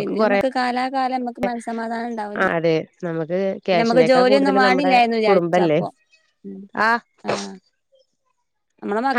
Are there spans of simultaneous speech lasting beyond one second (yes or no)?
yes